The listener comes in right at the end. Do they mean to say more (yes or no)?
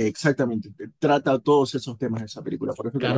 yes